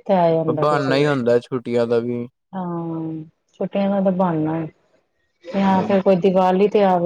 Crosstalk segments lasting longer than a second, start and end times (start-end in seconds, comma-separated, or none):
0.6-2.0